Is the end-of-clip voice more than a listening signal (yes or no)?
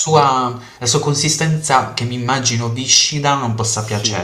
yes